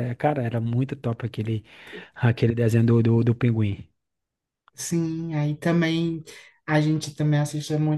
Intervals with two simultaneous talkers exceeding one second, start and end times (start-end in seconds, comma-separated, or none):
none